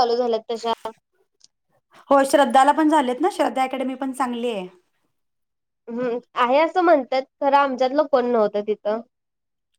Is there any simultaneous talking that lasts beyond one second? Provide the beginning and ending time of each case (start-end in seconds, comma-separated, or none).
none